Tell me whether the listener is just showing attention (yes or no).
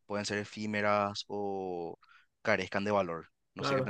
no